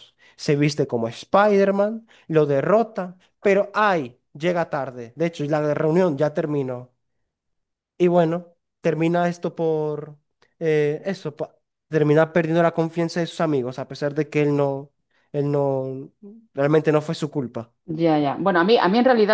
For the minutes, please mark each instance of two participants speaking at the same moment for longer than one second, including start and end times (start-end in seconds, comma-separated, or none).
none